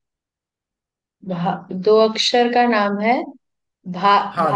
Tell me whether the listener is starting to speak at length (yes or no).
yes